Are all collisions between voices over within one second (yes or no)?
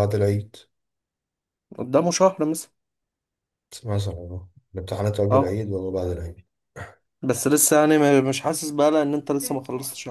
yes